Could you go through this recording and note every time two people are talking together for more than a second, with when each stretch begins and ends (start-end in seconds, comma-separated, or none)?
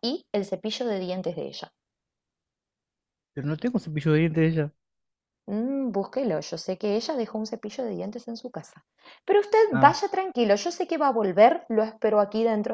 none